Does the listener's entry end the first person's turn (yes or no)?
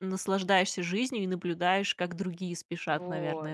yes